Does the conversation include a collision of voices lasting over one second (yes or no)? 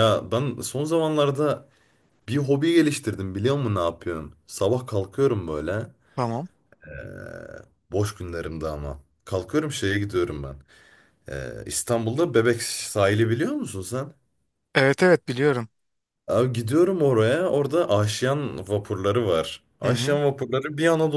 no